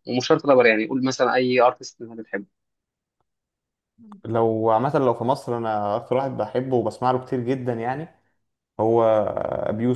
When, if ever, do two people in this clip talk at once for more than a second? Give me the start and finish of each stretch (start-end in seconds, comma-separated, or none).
none